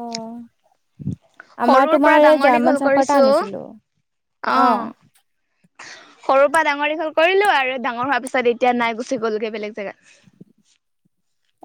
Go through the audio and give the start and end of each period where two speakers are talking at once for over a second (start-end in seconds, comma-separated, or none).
1.7-3.2